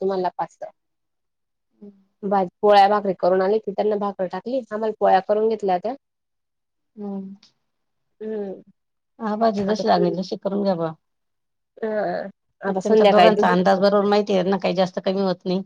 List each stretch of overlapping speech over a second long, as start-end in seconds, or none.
12.7-14.2